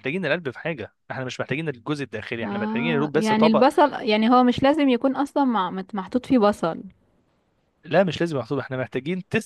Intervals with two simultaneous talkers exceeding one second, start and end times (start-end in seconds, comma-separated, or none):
2.4-3.6